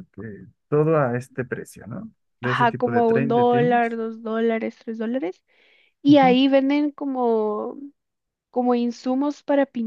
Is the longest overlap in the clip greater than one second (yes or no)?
yes